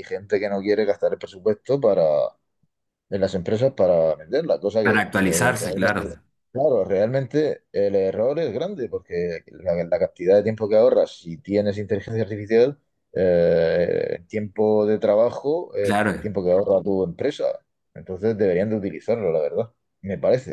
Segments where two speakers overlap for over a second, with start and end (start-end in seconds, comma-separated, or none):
4.8-6.1